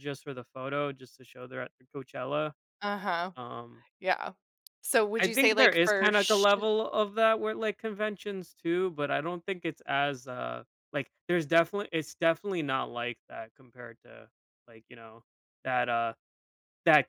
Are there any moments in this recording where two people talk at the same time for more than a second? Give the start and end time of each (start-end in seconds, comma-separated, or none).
5.2-6.5